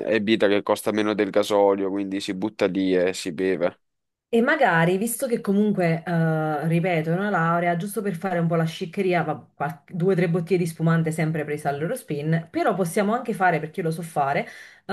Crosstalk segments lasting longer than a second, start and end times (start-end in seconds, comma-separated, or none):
none